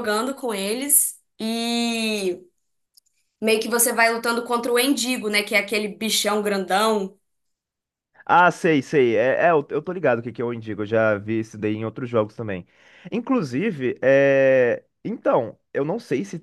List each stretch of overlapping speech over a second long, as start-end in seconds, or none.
none